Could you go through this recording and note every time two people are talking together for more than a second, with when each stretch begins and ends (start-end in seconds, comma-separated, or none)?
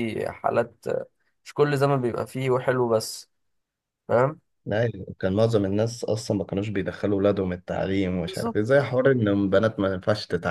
none